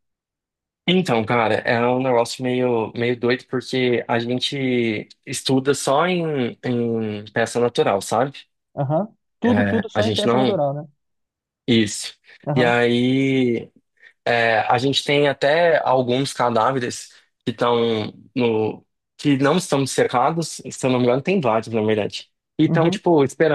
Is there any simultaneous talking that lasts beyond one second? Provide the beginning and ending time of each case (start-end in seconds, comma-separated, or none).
9.4-10.6